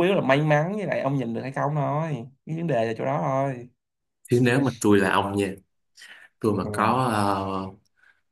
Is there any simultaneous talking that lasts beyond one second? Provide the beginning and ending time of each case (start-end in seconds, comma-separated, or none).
none